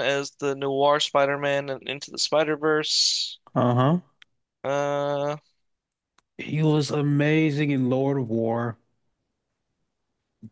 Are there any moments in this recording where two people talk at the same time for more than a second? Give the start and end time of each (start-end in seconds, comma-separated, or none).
none